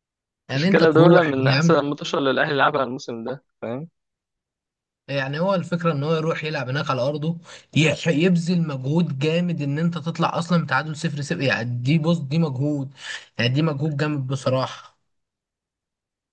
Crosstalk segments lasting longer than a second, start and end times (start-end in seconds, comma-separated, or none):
0.5-1.8